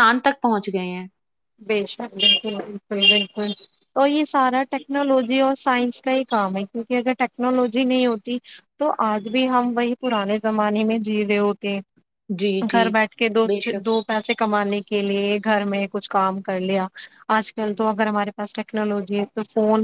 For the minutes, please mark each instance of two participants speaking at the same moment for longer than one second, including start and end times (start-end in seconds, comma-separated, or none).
none